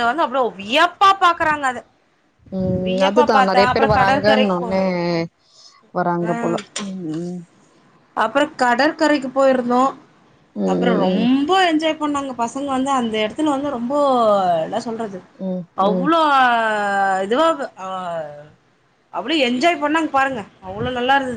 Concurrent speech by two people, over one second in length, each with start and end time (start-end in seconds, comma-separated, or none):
2.9-4.7